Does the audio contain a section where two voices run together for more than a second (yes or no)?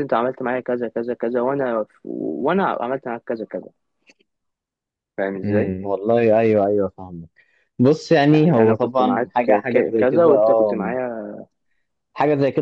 yes